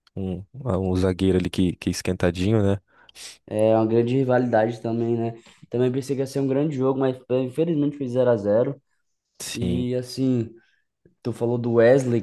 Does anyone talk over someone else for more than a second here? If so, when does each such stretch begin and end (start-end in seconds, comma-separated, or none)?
none